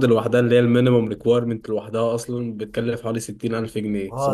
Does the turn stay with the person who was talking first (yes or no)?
no